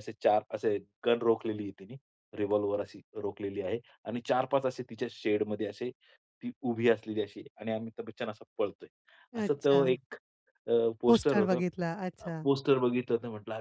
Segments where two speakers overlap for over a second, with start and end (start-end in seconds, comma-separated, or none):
none